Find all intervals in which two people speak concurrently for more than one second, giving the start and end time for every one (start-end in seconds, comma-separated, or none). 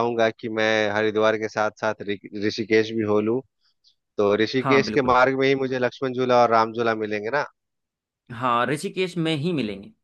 none